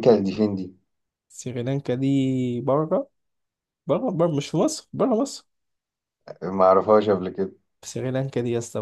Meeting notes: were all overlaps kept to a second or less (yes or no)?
yes